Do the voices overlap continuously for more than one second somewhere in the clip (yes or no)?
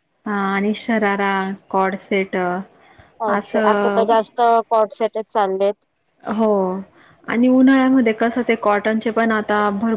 no